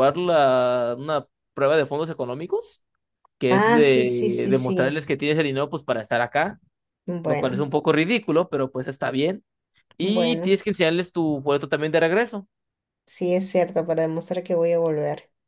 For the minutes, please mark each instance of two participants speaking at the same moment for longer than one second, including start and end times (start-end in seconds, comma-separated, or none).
3.5-5.0